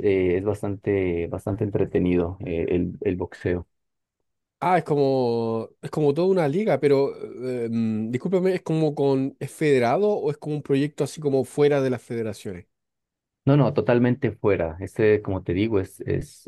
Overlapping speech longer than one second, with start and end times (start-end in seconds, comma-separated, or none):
none